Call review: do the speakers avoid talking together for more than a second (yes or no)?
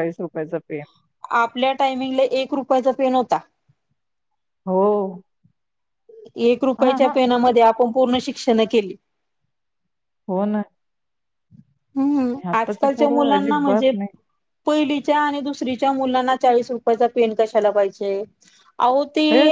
no